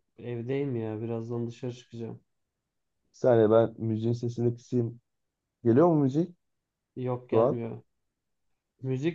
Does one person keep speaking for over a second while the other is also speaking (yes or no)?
no